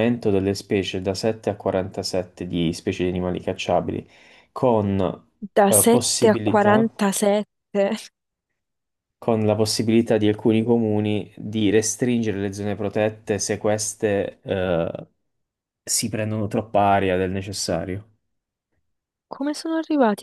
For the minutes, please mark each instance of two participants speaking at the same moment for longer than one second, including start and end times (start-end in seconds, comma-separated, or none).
5.7-6.9